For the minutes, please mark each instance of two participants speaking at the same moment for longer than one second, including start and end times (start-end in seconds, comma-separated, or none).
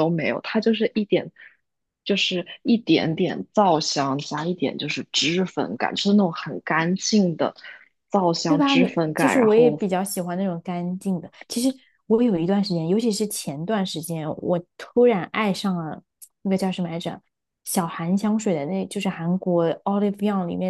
8.5-9.8